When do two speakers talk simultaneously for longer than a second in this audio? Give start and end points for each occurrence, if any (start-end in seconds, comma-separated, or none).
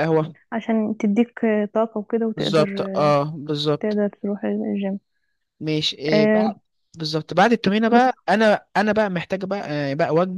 none